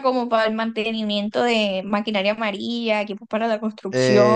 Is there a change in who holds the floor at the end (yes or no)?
yes